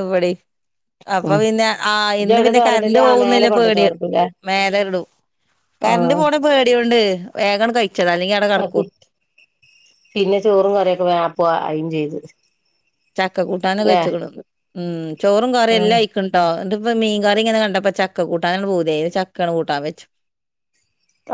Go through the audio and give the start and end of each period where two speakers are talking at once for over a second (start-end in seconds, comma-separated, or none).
2.2-3.8